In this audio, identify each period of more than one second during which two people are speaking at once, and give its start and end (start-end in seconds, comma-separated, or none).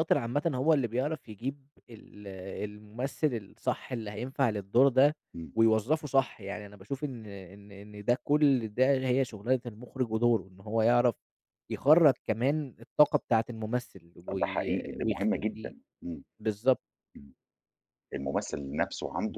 14.3-15.7